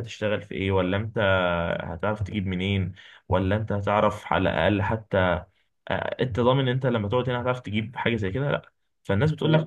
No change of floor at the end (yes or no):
yes